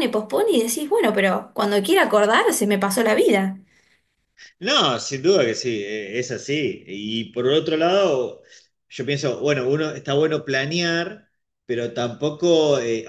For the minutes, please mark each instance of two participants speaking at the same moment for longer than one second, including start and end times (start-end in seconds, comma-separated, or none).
none